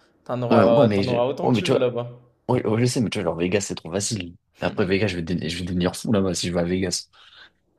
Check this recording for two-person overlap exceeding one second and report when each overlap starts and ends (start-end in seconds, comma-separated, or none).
0.5-1.9